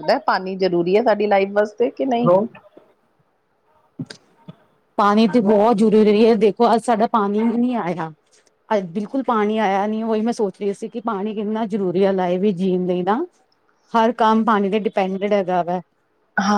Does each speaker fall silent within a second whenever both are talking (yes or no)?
yes